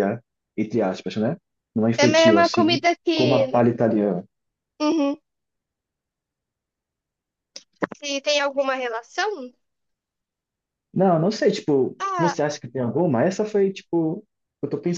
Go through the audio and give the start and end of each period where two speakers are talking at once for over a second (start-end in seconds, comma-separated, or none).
2.0-3.6